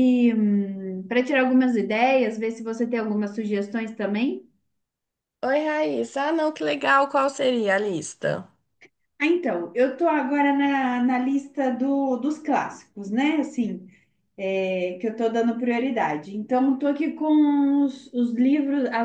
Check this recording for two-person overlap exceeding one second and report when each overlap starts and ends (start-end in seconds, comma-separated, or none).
none